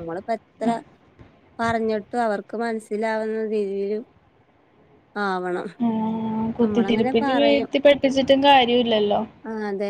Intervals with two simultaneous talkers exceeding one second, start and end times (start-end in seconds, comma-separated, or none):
none